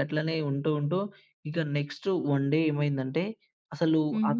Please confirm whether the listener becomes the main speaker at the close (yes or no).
no